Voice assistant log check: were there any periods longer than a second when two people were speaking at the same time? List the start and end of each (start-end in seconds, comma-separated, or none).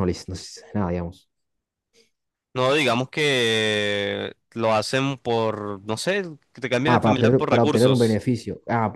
6.9-8.2